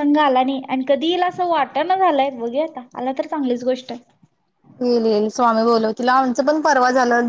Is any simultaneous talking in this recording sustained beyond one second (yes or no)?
no